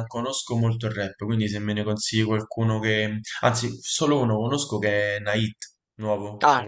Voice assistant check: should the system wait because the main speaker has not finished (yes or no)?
no